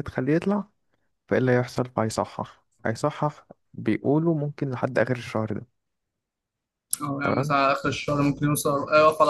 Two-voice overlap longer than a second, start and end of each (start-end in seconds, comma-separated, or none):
none